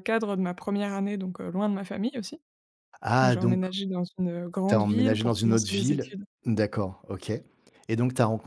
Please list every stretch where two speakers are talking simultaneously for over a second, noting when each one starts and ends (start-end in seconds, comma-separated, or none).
4.7-6.2